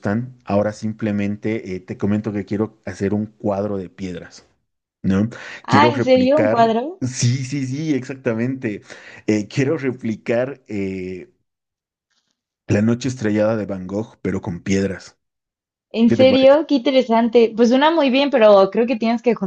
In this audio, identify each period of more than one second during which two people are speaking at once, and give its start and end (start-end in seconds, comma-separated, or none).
5.7-7.0